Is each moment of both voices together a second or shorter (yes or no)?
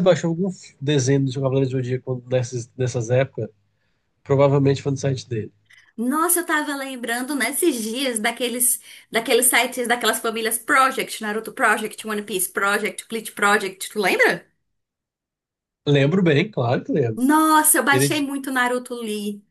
yes